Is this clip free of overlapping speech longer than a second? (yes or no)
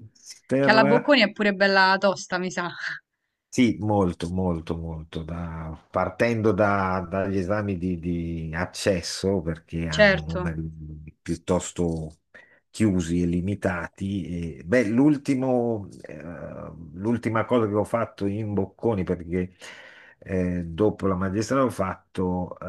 yes